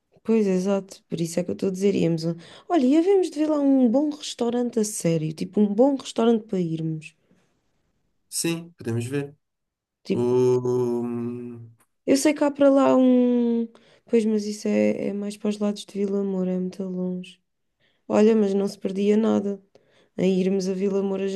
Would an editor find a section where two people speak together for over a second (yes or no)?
no